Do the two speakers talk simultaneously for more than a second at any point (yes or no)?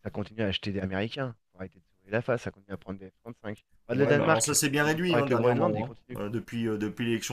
yes